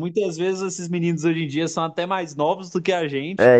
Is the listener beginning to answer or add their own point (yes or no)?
yes